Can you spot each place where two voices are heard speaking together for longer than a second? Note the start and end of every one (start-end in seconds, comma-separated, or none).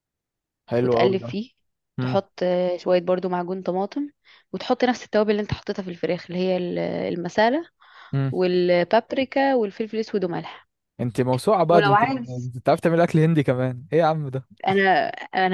none